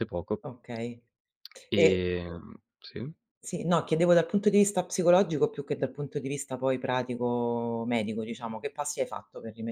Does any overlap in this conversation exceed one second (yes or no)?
no